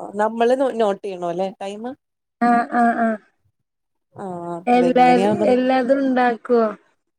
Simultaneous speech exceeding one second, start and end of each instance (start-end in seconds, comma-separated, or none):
none